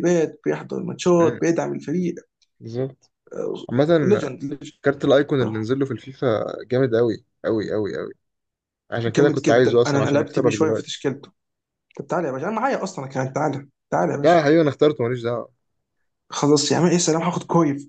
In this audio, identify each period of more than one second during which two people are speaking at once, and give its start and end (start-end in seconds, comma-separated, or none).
9.1-10.9